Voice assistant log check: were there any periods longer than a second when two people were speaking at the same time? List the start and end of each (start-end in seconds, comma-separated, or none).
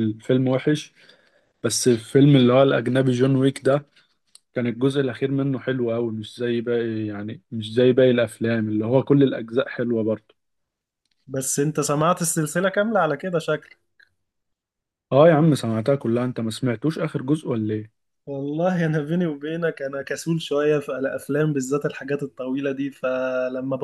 none